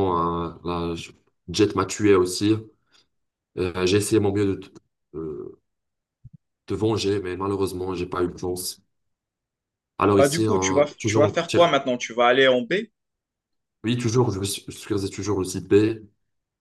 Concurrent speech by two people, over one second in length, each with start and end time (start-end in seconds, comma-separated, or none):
10.2-11.7